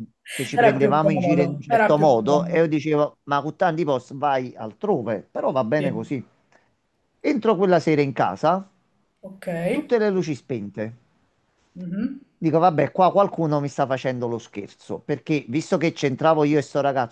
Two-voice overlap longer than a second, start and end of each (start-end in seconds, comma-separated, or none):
0.5-2.6